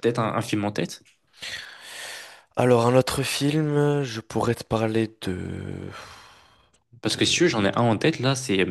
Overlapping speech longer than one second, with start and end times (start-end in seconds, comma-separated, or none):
none